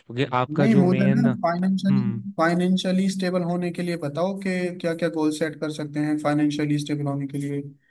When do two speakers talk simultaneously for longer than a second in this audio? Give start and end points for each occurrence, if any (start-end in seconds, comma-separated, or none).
0.6-2.0